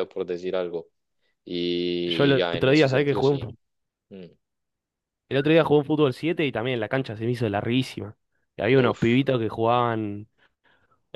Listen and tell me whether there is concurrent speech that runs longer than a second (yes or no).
yes